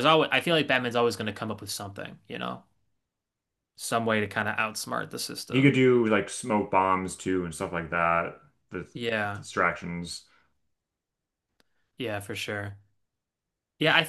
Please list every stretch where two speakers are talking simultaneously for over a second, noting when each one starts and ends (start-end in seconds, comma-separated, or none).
none